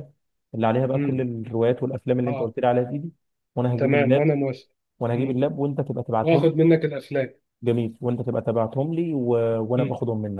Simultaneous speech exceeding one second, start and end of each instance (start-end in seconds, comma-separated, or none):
none